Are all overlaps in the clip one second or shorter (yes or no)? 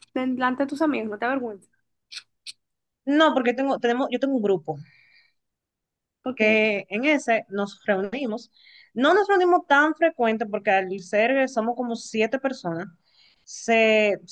yes